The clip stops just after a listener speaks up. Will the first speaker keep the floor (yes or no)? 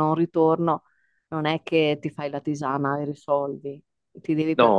yes